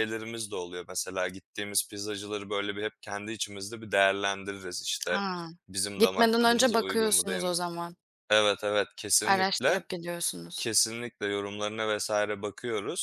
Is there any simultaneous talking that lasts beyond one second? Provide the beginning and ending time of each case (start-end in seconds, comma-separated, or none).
6.0-7.6